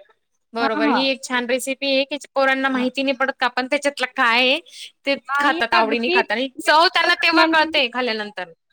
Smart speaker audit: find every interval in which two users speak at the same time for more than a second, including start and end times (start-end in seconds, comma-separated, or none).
5.3-7.8